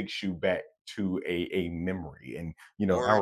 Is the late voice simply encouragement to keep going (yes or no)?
yes